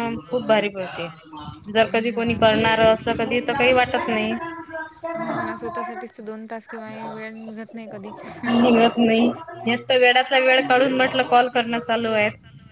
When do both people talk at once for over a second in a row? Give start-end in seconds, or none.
none